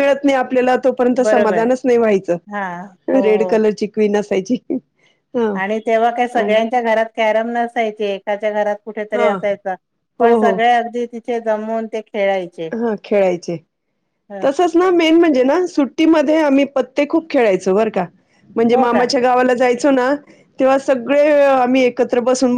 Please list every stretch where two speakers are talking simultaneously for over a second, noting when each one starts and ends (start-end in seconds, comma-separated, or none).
none